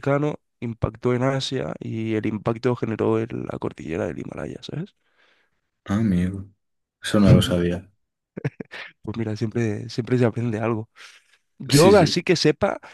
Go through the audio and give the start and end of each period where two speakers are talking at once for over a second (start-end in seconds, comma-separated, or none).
none